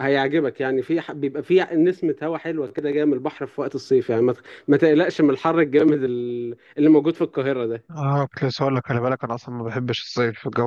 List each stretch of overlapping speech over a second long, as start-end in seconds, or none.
none